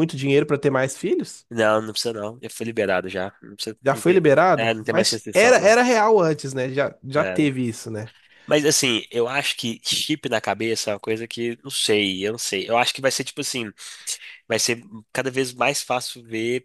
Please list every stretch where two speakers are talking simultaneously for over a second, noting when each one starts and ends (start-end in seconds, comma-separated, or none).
3.8-5.8